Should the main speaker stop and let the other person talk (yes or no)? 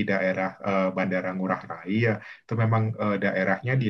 no